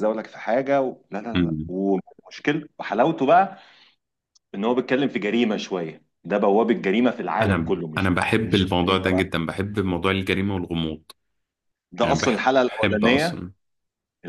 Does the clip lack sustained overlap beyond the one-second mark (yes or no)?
no